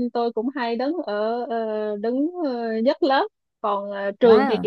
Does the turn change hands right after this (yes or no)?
no